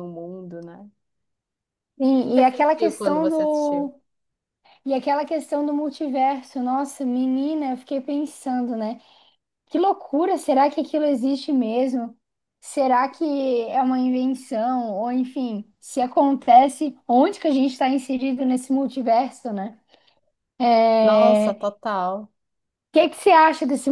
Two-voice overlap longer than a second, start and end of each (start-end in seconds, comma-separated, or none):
2.3-3.9